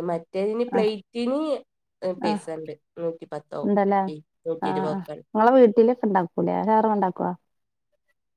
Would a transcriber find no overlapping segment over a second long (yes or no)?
yes